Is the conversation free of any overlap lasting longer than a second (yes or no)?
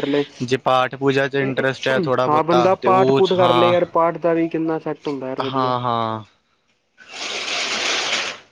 no